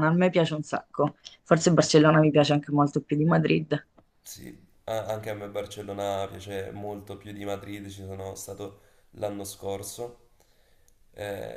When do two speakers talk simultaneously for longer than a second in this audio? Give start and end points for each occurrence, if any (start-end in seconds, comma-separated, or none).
none